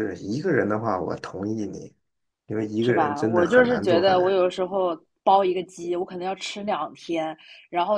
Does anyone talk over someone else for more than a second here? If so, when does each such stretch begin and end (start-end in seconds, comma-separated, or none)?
2.8-4.4